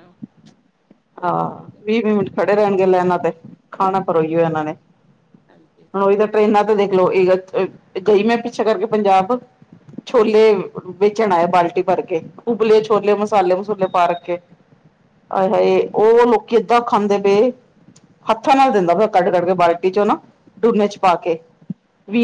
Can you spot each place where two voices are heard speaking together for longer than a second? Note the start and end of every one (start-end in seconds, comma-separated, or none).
none